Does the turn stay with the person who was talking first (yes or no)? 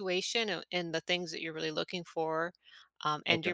yes